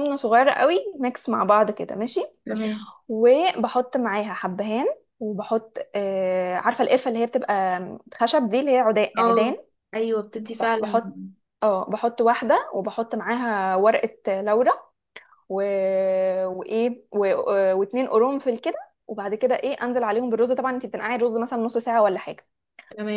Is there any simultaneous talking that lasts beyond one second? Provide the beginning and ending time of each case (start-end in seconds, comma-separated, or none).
none